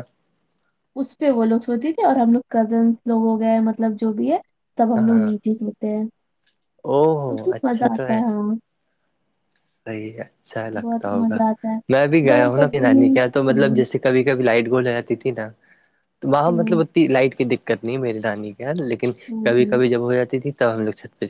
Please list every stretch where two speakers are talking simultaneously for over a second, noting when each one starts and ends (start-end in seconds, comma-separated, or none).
12.3-13.8